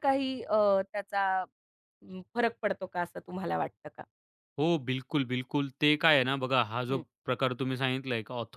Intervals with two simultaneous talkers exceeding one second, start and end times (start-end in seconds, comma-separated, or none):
none